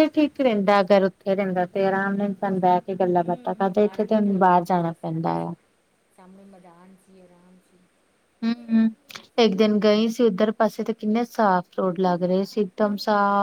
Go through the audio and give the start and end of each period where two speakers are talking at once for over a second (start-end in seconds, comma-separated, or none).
3.2-5.5